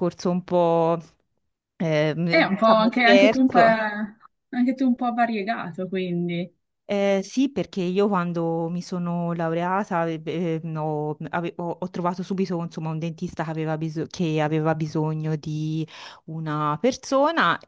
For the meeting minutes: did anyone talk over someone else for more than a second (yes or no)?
yes